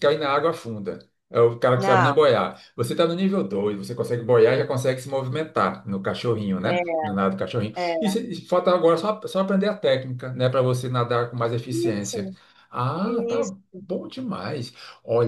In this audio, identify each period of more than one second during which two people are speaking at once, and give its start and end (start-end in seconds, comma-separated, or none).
none